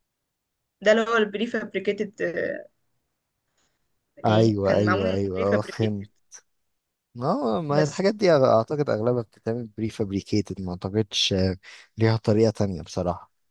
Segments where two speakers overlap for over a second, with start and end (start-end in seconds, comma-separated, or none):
4.2-6.1